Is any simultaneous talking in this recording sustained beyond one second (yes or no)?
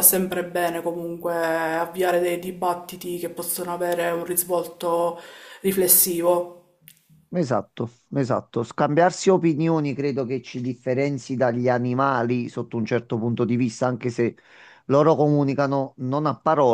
no